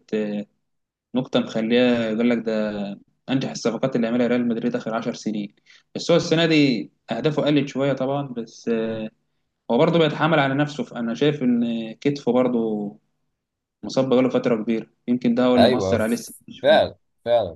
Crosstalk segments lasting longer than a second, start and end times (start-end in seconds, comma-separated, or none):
15.6-16.9